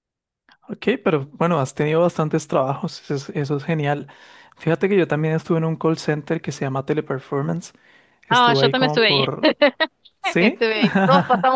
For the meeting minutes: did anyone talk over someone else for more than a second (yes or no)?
yes